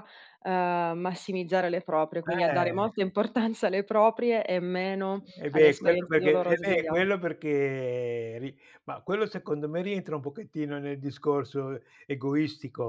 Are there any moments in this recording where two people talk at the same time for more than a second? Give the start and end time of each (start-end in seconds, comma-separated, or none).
5.4-7.0